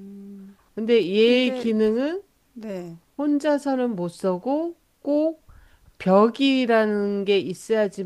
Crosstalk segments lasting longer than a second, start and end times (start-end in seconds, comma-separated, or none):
none